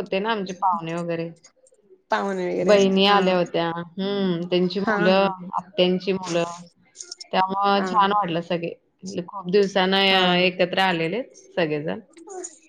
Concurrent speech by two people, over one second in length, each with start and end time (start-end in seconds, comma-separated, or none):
none